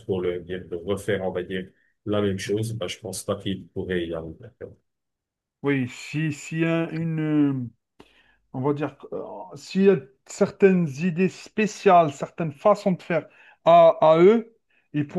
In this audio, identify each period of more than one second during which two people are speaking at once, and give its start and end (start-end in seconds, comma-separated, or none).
none